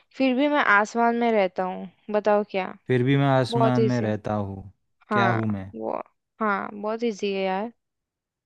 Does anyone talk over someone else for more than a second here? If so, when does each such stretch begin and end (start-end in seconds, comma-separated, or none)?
none